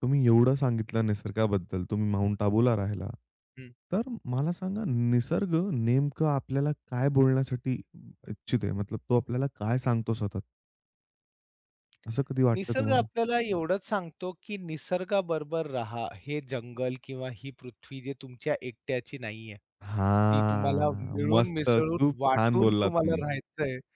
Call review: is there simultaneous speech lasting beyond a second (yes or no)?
yes